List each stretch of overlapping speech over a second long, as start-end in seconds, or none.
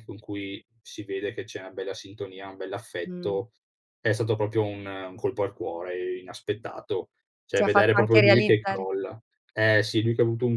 7.6-8.8